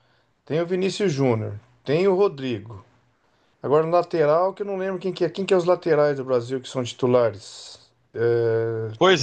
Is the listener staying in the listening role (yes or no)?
no